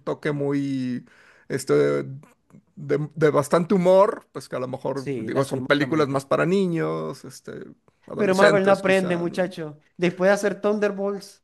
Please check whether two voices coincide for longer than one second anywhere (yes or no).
yes